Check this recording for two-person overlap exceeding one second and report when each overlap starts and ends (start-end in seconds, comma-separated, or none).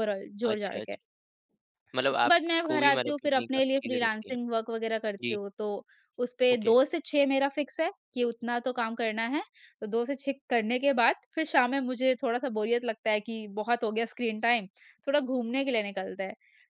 2.1-4.4